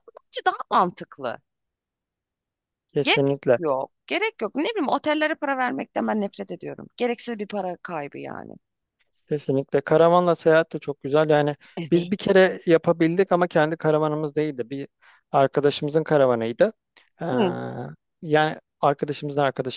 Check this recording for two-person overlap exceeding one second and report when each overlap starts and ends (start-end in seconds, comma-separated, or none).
none